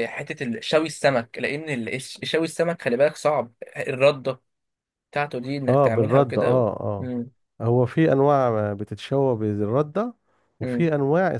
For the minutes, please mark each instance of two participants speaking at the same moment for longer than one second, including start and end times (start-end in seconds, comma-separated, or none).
5.7-7.1